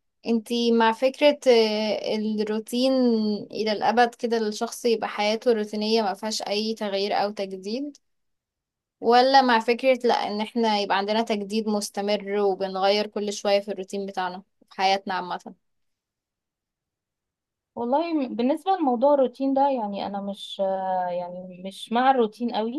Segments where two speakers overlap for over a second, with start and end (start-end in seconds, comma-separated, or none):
none